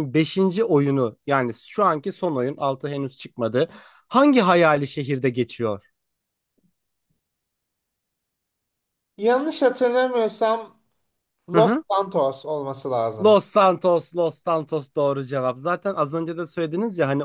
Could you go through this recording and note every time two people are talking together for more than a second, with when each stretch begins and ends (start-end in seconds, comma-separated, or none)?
none